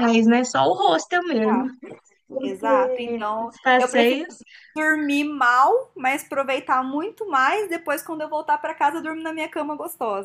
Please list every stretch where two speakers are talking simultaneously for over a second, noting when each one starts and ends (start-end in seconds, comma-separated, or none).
2.4-4.2